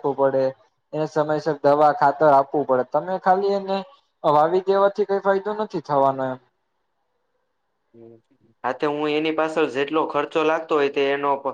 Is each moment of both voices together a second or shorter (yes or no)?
yes